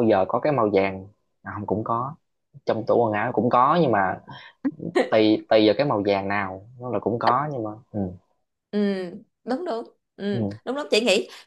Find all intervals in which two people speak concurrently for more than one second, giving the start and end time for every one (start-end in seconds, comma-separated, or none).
none